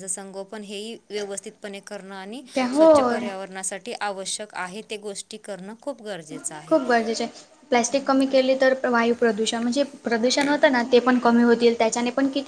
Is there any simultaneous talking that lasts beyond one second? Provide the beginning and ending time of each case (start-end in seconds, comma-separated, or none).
none